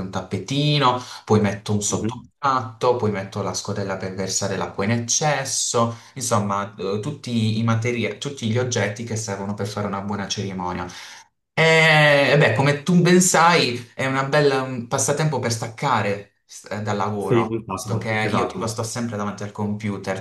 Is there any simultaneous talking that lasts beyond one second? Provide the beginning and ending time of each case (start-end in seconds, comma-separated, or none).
17.2-18.7